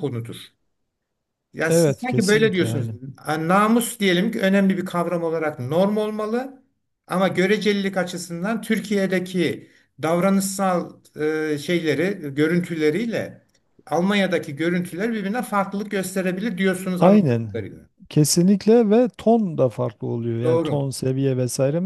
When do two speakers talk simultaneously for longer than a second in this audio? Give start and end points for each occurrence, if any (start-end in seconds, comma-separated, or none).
1.7-3.0